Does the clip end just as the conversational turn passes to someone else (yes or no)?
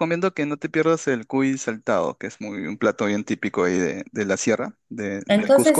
yes